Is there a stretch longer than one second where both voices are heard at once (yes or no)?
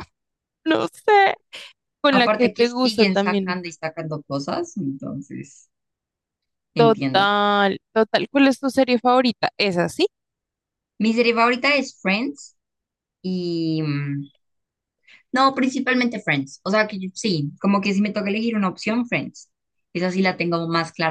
yes